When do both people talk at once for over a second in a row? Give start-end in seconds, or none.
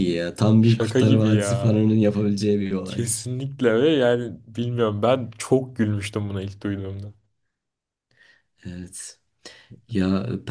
0.6-1.8